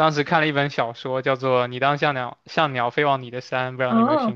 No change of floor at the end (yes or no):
no